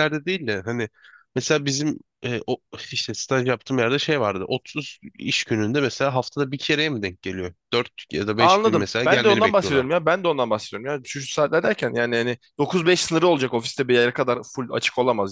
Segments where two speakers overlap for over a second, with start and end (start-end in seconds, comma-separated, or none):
8.4-9.9